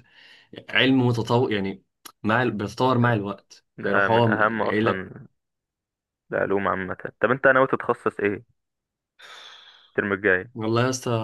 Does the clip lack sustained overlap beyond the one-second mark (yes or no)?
no